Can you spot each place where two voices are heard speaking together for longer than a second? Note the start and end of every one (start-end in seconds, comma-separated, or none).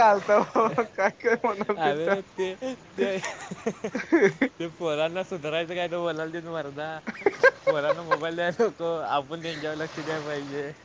none